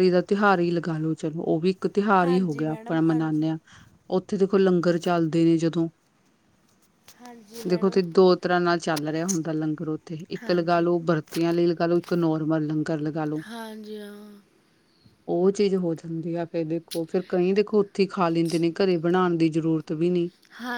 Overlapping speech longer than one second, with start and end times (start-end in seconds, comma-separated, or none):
2.2-3.4